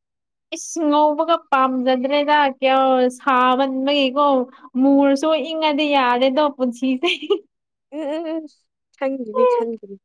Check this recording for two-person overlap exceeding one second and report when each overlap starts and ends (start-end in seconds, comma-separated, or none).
none